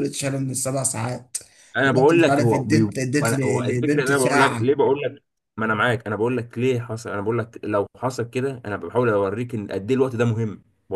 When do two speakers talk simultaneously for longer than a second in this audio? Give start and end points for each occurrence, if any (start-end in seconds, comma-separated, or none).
1.9-4.7